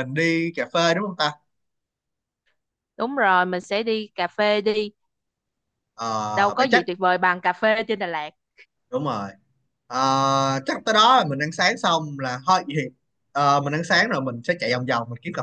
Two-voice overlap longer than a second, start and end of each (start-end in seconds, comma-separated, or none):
none